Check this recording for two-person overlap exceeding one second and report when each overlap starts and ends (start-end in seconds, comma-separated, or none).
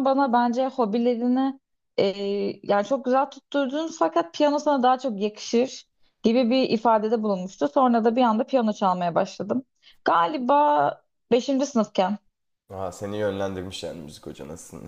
none